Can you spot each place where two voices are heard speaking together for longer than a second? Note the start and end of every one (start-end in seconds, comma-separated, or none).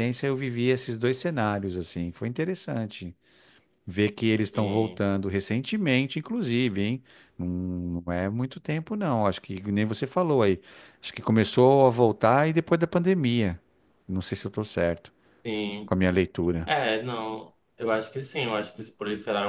none